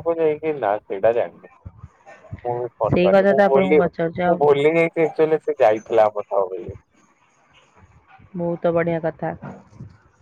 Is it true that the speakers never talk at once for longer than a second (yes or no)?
no